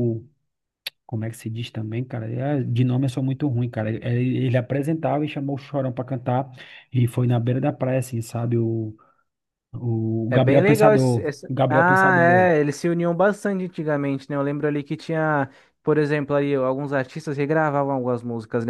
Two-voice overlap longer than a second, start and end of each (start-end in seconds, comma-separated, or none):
10.3-12.5